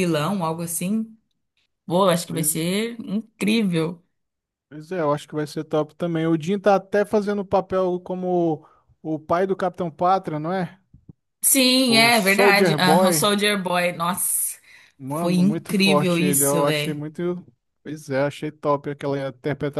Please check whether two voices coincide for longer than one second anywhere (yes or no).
yes